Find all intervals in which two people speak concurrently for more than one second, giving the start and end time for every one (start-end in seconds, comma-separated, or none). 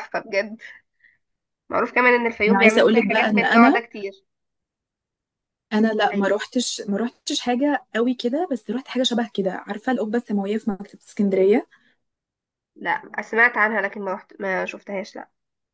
2.5-3.8